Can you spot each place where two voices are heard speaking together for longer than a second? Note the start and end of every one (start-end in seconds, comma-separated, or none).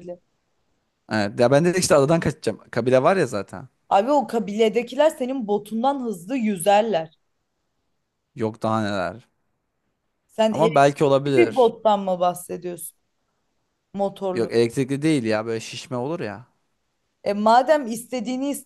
10.5-11.7